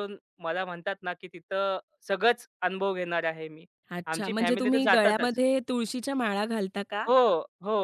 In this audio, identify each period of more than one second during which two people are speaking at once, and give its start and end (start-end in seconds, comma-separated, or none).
4.1-5.4